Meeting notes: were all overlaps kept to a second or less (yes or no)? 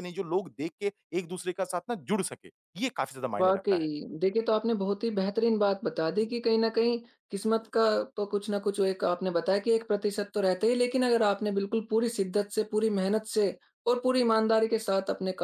yes